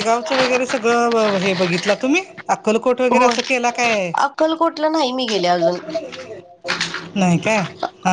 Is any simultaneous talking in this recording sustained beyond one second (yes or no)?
no